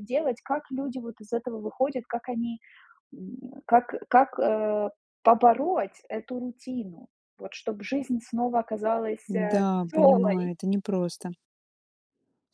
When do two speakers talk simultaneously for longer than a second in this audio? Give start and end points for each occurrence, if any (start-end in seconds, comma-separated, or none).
9.3-10.5